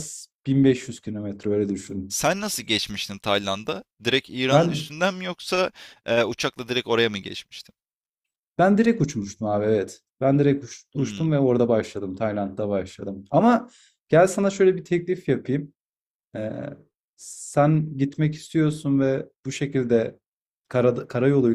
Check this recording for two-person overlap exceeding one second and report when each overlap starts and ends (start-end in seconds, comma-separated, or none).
none